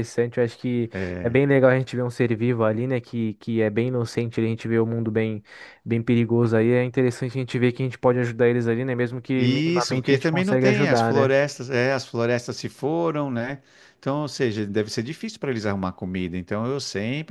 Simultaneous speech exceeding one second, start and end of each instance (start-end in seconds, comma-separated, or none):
9.4-11.3